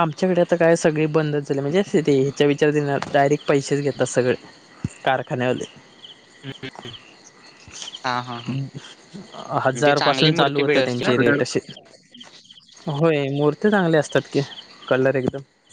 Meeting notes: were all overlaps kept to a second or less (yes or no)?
no